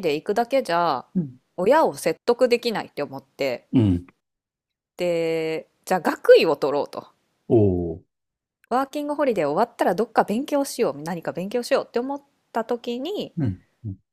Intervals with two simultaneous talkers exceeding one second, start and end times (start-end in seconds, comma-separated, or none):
none